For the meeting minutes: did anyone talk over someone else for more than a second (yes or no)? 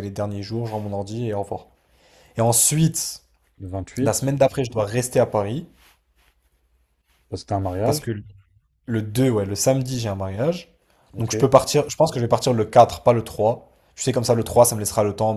no